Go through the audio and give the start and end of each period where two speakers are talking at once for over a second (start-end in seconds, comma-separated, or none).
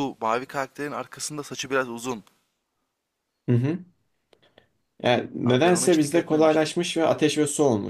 5.5-6.8